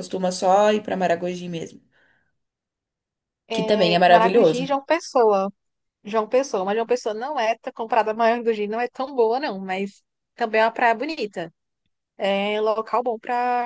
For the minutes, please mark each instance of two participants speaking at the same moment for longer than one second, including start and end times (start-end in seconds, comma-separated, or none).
3.5-4.7